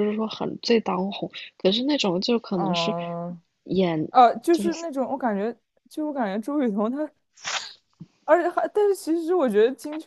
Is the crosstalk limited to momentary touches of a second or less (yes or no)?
yes